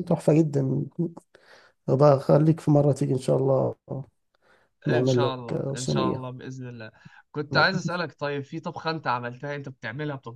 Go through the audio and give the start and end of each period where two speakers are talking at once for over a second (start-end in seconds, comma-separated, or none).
4.9-6.2